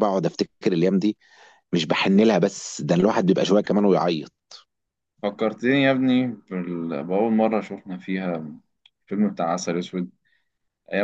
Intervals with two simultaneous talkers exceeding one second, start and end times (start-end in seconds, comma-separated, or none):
none